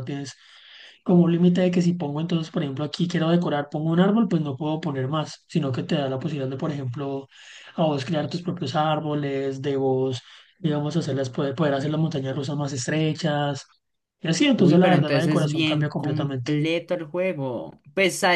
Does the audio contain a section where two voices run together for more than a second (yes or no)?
yes